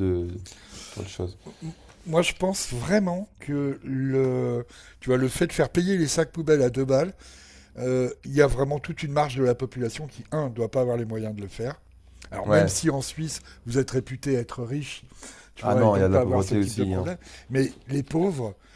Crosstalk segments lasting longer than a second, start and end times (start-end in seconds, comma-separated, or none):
15.6-17.1